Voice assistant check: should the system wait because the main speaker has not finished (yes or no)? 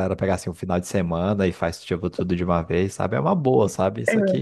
yes